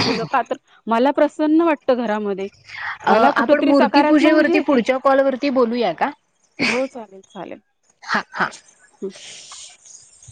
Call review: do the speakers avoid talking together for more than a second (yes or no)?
no